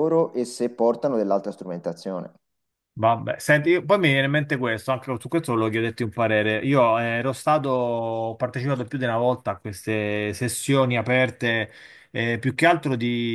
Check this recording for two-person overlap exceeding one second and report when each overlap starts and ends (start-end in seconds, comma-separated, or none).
none